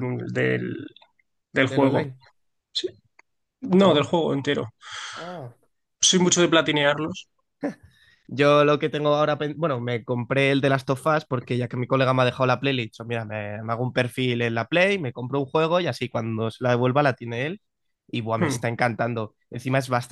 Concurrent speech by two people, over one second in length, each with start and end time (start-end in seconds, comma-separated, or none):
none